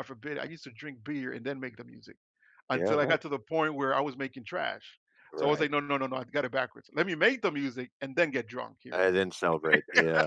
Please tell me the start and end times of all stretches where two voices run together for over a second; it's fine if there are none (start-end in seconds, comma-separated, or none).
none